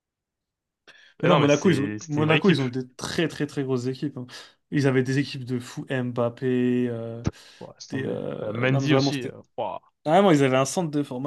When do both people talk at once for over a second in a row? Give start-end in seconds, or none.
1.2-2.6, 7.9-9.3